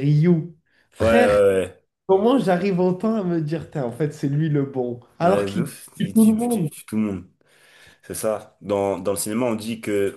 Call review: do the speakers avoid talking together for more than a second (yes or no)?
no